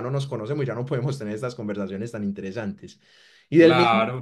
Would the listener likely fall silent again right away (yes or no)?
yes